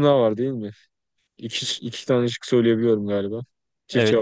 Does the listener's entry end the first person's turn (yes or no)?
yes